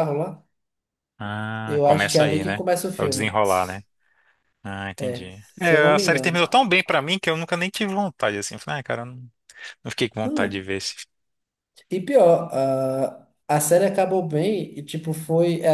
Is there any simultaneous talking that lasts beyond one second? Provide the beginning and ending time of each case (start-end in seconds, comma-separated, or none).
1.6-3.4, 5.0-6.4